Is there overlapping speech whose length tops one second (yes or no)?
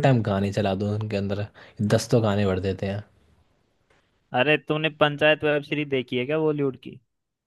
no